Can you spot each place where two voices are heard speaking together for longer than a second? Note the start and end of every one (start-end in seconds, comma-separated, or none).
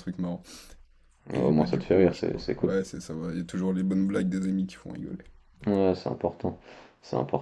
1.3-2.7